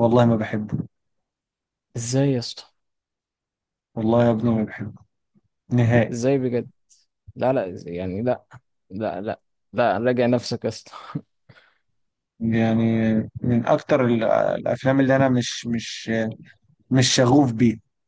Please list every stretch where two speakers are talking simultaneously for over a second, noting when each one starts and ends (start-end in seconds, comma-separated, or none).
none